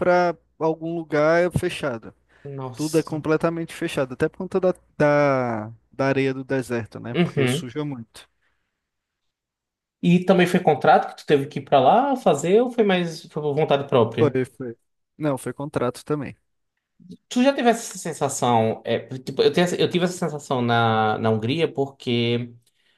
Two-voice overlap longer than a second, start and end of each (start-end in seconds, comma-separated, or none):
none